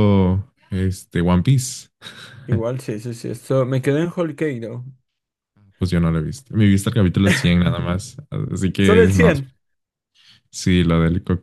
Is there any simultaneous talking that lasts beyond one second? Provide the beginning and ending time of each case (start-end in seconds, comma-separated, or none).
none